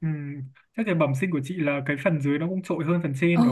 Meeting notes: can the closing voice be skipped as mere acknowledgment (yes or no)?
no